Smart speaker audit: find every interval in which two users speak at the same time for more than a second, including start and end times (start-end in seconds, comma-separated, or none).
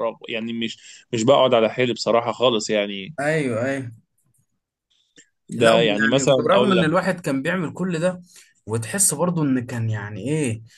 5.6-7.1